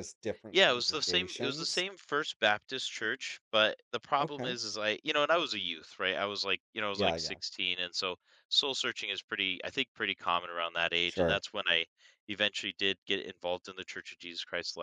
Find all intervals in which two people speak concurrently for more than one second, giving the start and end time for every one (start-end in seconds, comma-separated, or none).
0.5-1.9